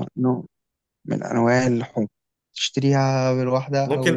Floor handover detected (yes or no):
yes